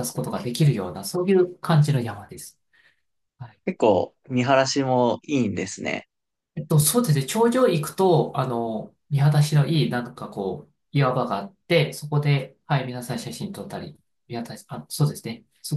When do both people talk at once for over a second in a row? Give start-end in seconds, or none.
none